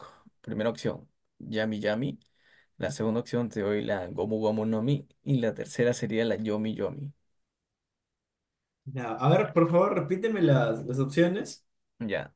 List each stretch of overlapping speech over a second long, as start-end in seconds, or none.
none